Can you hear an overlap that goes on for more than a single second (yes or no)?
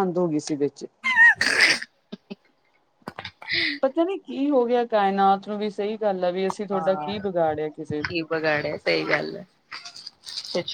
no